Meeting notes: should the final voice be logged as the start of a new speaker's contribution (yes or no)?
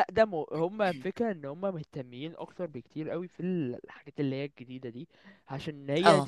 no